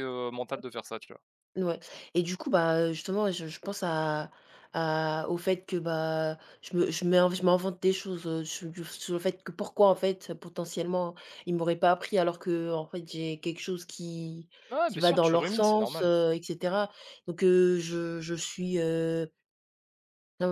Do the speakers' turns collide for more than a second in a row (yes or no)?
yes